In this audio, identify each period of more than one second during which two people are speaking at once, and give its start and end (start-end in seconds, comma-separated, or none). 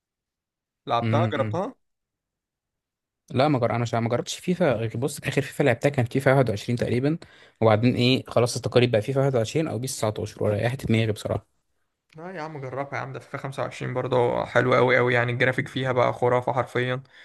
none